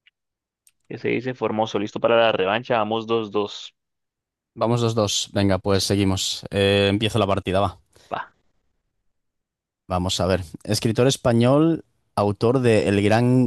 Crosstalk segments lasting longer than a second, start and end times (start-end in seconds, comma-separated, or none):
none